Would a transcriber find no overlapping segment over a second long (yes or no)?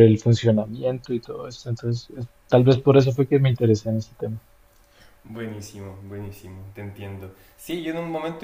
yes